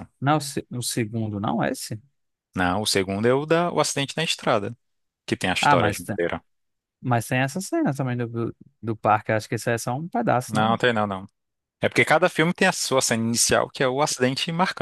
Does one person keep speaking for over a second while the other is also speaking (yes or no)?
no